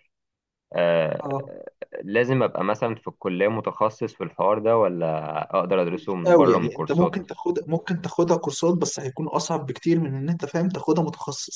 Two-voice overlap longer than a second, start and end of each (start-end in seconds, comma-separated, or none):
5.9-7.2